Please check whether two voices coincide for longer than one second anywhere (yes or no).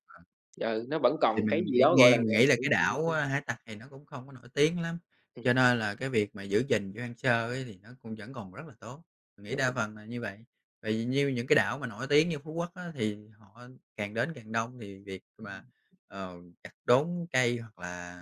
yes